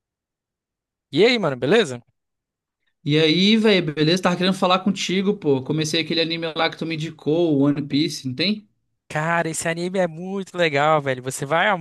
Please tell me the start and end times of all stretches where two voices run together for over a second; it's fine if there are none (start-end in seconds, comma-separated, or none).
none